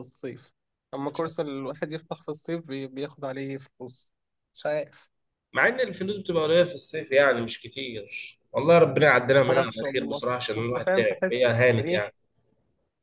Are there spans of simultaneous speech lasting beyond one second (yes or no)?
yes